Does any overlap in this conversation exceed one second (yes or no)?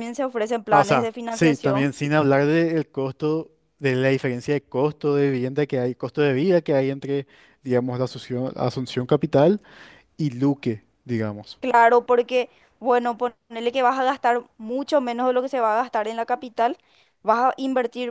yes